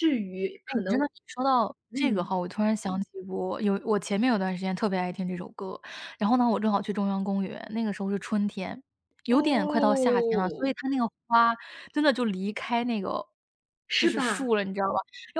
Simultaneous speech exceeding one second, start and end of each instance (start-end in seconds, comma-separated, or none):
9.3-10.7